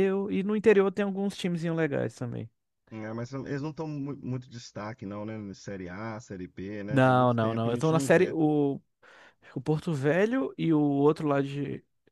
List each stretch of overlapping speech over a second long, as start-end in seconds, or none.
6.9-8.3